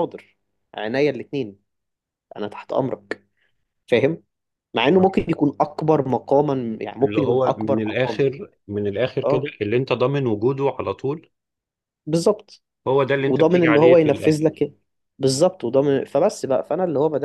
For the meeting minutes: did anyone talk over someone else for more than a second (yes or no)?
yes